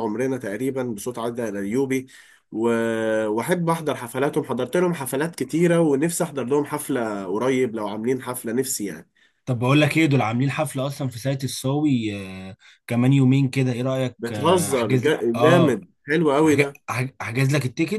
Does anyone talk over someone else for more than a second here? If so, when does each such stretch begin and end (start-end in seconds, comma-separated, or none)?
14.2-15.8